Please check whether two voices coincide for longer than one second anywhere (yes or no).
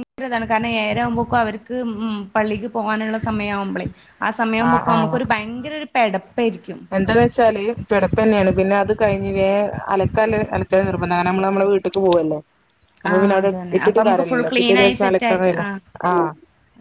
yes